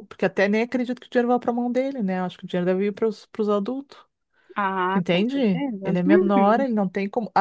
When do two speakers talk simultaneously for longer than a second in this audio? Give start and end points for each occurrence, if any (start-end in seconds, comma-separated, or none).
4.9-6.7